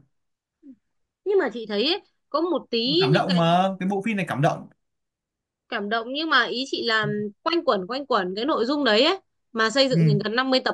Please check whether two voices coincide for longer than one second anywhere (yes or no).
no